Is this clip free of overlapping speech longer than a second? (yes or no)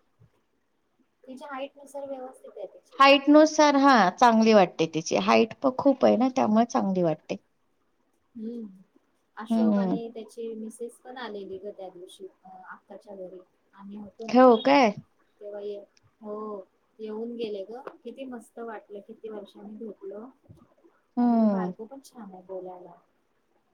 yes